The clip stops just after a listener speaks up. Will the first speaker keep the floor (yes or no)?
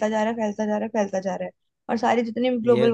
yes